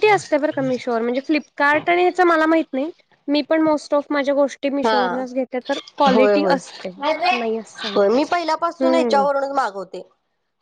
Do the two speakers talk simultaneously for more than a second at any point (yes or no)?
no